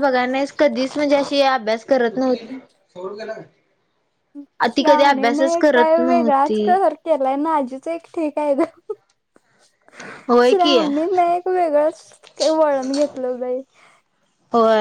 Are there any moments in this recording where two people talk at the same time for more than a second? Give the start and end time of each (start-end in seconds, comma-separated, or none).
none